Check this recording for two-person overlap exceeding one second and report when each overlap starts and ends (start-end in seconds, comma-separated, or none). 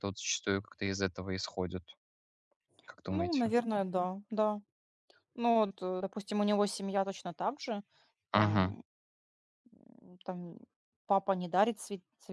none